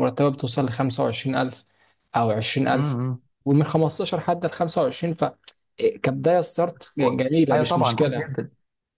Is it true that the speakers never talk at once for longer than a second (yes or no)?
no